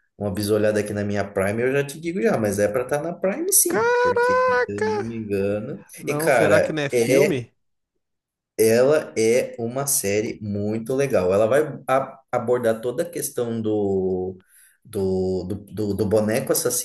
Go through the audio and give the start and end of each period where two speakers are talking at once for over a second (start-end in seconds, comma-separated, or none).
3.7-5.1, 6.0-7.4